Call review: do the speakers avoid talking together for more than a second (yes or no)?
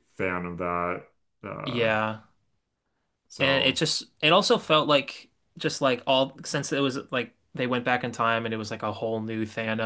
yes